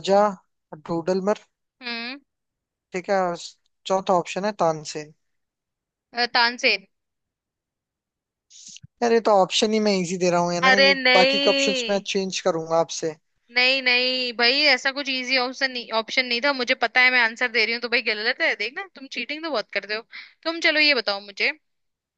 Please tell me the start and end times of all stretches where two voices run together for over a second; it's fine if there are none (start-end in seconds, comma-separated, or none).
10.6-12.0